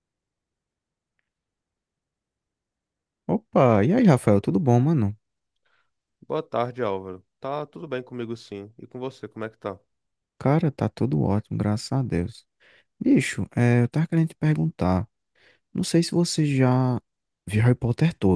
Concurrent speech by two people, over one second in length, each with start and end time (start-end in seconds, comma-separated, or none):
none